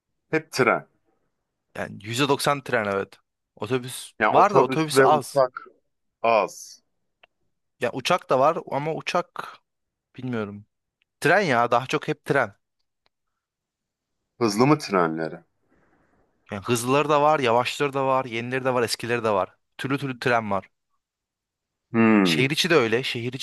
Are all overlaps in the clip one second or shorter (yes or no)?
no